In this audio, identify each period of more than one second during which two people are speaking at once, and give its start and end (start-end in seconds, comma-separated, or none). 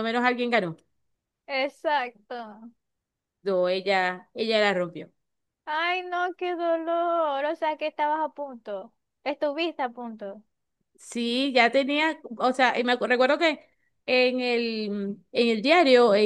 none